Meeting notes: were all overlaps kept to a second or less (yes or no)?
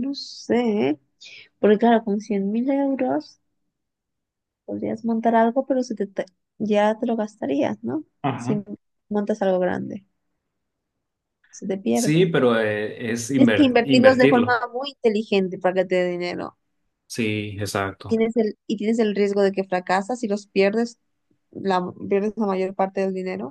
no